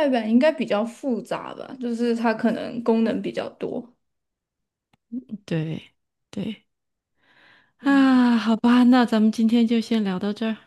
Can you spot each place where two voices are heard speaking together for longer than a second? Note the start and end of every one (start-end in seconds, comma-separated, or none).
none